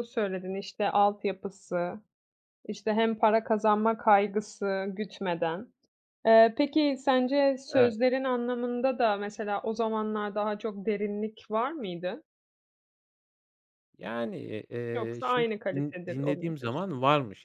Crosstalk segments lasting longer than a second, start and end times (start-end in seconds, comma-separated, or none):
14.9-16.9